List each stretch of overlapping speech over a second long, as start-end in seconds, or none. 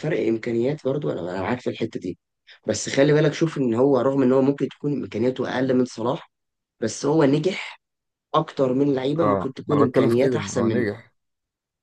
9.2-10.9